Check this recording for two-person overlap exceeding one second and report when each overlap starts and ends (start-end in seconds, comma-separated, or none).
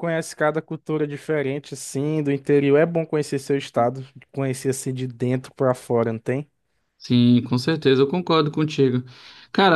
none